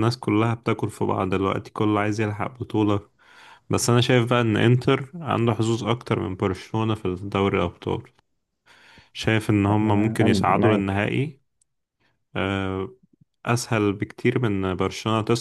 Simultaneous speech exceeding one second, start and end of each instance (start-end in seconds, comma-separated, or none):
9.6-11.1